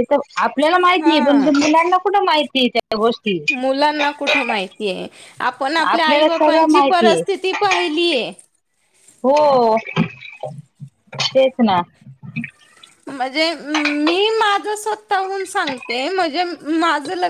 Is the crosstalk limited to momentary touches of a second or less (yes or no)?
no